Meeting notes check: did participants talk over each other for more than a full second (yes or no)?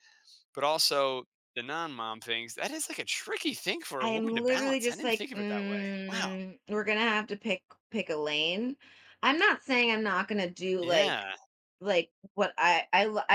yes